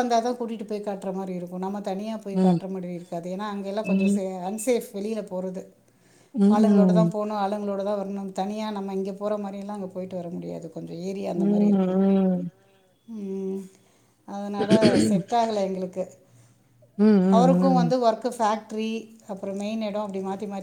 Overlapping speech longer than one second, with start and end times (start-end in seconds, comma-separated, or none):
none